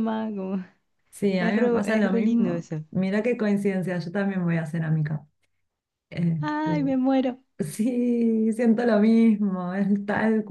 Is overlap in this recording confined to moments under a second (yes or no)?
no